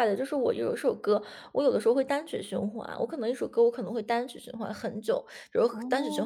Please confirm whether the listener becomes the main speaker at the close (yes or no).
no